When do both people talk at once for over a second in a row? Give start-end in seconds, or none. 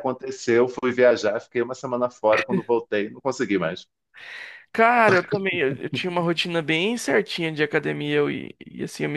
none